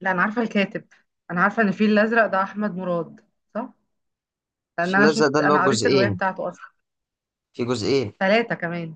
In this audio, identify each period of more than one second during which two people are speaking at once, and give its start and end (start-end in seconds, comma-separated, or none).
4.8-6.2